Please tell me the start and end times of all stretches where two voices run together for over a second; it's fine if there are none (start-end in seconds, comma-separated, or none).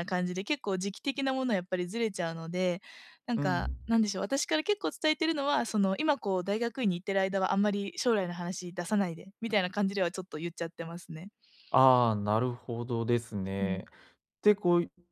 none